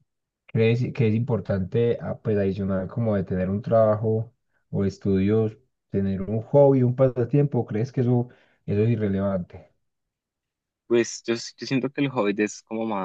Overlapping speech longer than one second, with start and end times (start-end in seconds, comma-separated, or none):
none